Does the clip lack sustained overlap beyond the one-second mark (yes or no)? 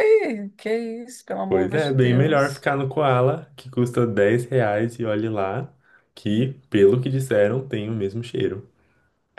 no